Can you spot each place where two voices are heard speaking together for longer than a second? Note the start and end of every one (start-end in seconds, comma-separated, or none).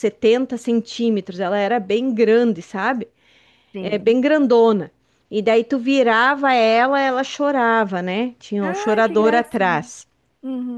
8.6-9.9